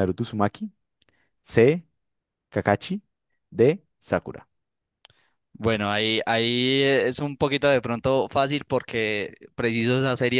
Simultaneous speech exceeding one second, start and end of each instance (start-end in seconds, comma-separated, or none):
none